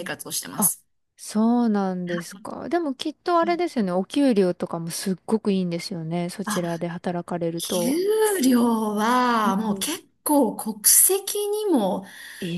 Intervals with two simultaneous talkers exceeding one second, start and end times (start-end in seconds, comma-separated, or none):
none